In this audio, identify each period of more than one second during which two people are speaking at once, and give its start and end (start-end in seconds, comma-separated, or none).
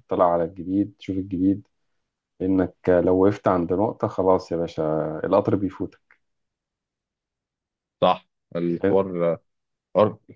none